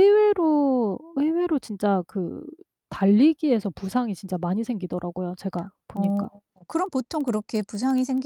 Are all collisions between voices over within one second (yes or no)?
yes